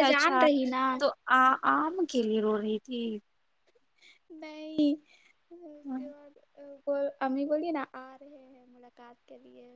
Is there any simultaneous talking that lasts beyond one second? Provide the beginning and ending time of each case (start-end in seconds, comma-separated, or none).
none